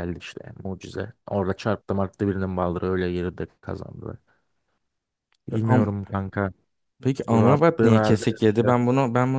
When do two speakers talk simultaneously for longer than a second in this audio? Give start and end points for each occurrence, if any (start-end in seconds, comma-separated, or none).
7.3-8.7